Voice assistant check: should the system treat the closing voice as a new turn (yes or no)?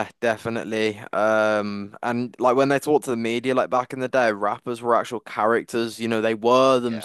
no